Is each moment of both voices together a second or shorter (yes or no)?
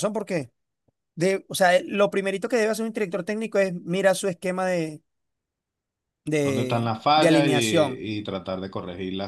no